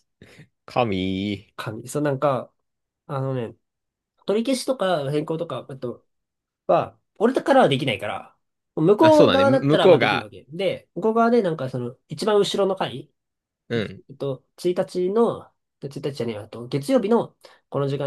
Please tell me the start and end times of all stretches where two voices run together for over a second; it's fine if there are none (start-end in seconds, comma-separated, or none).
9.0-10.3